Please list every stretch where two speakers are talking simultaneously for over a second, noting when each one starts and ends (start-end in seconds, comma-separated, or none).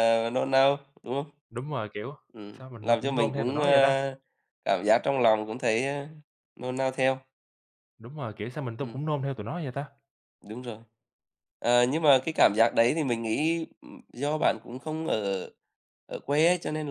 2.6-4.0